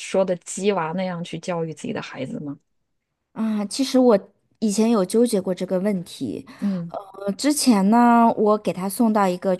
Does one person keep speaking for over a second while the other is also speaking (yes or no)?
no